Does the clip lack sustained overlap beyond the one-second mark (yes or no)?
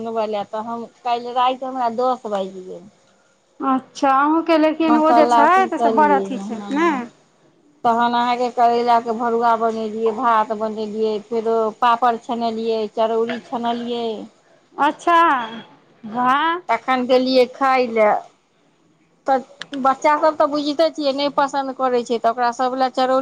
no